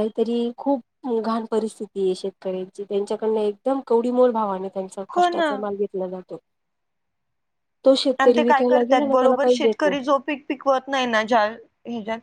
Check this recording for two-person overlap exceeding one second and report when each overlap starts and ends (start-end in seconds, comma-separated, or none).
8.2-9.9